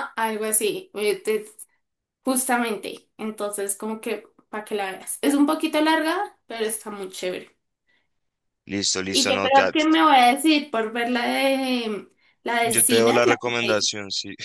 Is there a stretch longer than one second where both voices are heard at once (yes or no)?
yes